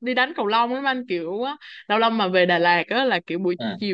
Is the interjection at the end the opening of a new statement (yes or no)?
no